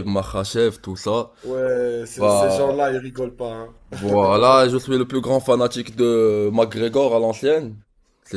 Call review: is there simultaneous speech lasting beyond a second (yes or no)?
no